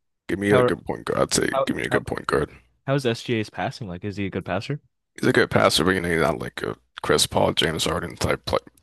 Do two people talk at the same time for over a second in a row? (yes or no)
no